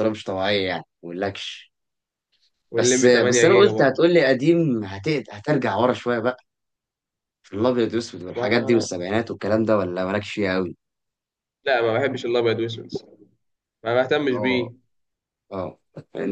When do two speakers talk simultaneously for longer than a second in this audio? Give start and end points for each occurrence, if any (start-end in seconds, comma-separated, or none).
2.7-4.0